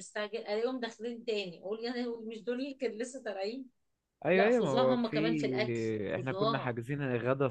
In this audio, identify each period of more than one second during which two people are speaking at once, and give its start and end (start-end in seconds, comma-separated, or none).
4.3-6.8